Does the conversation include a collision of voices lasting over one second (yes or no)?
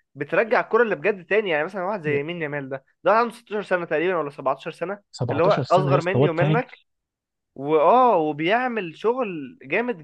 yes